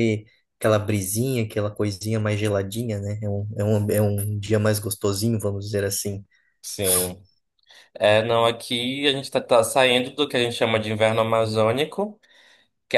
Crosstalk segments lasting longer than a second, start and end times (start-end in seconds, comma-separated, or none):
none